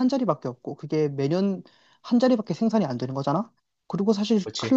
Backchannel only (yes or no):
yes